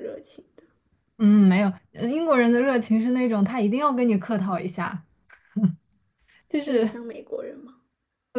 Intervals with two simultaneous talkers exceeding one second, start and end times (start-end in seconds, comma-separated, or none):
none